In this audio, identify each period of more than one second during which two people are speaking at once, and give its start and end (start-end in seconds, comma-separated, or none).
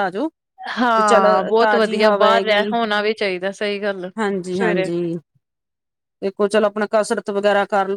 1.0-2.6